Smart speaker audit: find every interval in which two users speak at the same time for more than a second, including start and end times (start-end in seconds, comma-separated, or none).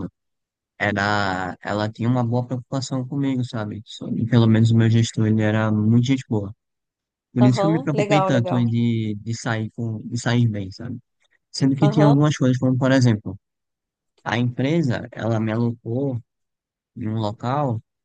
7.4-8.8